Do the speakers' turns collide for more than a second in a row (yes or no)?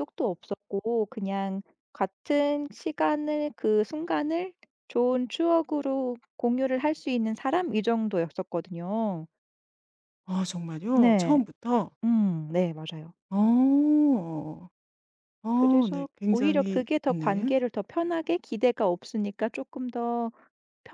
yes